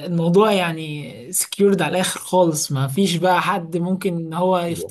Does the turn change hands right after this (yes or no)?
yes